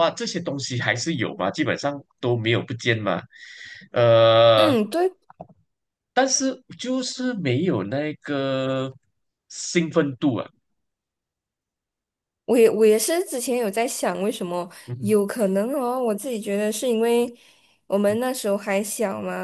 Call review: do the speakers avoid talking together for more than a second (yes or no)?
yes